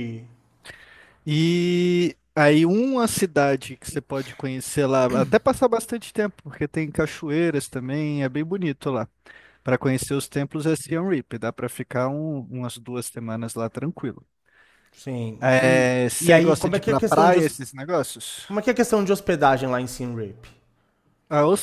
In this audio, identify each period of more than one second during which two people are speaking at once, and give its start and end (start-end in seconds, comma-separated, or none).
15.4-17.5